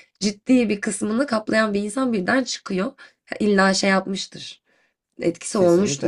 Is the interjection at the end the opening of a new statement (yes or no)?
yes